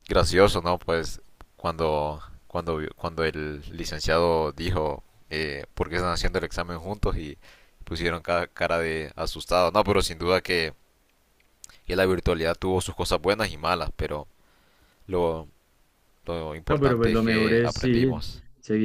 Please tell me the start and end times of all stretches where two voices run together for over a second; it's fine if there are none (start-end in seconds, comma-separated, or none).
16.7-18.1